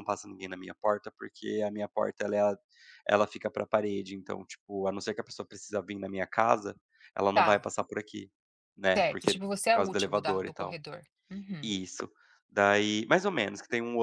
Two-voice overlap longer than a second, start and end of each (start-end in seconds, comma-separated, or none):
9.0-10.8